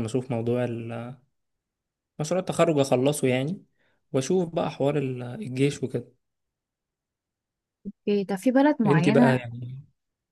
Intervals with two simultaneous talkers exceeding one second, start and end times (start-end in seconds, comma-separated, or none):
none